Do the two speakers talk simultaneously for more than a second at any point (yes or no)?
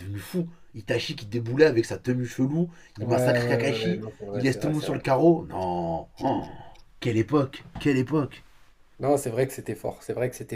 yes